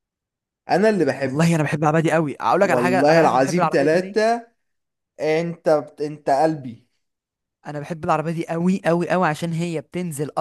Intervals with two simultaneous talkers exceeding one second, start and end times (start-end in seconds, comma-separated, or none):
2.6-4.2